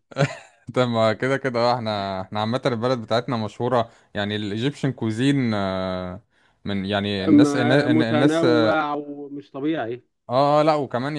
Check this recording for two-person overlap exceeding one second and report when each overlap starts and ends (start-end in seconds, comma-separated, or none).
7.3-8.8